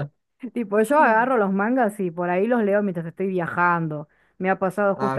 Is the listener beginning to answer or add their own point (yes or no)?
no